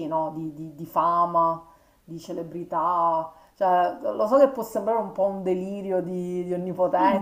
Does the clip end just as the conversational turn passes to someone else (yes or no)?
yes